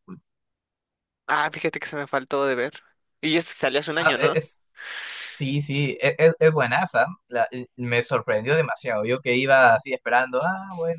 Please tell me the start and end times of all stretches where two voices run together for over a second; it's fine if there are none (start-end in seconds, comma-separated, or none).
none